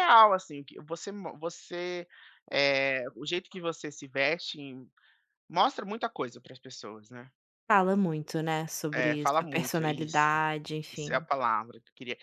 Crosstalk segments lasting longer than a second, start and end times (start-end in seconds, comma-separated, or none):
8.9-10.3